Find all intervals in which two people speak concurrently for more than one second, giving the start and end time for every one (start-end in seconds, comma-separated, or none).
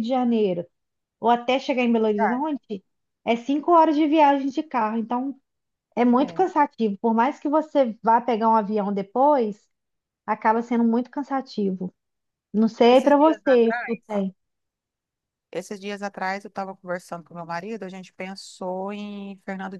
12.9-14.2